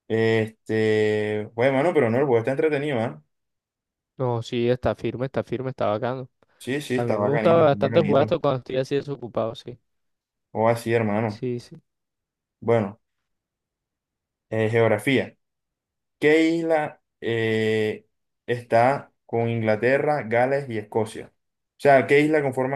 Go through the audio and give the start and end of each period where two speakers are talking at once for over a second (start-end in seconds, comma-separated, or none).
6.9-8.4